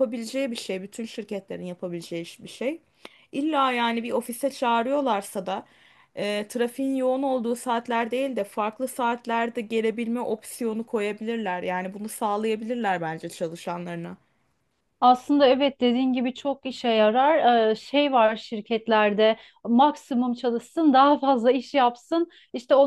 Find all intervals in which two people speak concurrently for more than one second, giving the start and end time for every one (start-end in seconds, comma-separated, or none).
none